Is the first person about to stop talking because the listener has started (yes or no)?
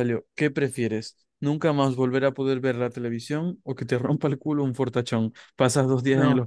no